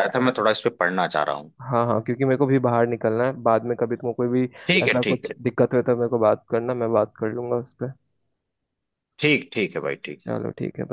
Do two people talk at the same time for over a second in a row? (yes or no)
no